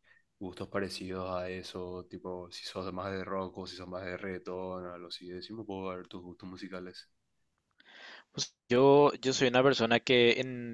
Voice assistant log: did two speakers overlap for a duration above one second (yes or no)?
no